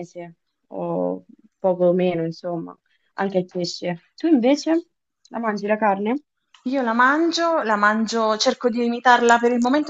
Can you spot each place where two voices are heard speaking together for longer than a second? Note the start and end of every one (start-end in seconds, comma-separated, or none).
none